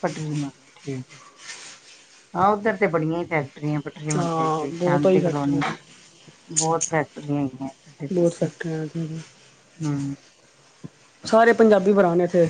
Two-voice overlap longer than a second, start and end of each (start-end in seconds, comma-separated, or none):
4.2-5.6